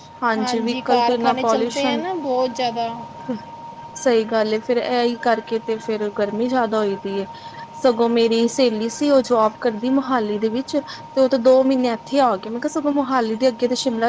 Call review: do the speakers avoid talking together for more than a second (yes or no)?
no